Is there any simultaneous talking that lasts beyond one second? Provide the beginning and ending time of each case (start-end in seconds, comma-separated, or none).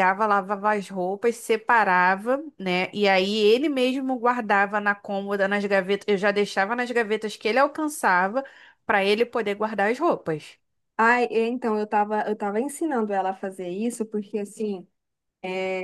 none